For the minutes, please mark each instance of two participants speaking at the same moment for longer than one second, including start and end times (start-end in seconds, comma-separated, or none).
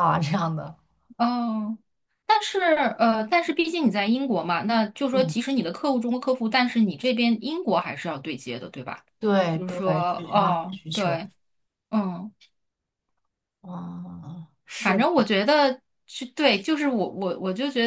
9.5-11.2